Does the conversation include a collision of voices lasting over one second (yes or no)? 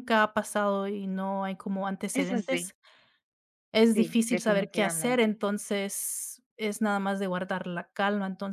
yes